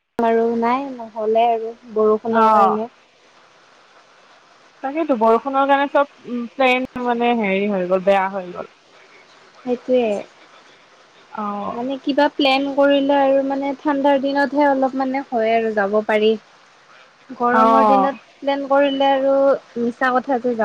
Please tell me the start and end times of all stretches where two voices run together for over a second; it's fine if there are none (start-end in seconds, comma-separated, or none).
none